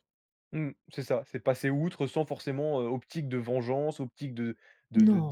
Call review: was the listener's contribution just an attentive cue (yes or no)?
yes